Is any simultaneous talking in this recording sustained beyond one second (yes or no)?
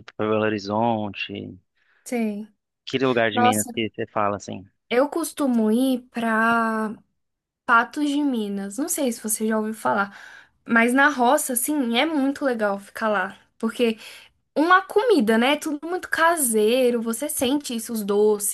no